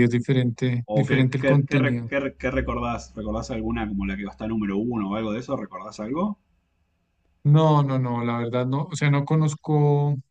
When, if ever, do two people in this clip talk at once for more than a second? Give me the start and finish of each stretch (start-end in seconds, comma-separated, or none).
0.8-2.1